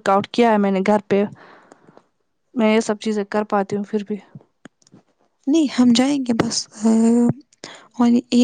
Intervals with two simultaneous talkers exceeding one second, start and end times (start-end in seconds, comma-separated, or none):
none